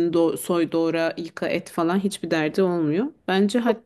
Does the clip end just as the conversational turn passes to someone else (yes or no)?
no